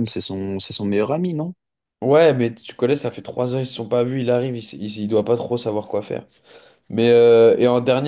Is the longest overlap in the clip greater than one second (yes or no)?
no